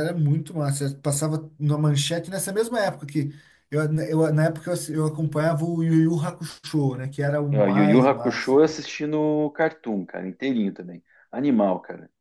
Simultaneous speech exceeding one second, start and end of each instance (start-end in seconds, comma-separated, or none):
7.6-8.8